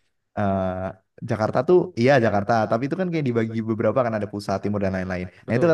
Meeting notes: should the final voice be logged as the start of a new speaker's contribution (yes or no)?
no